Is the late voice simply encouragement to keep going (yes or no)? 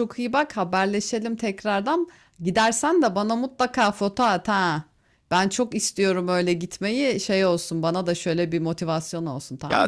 no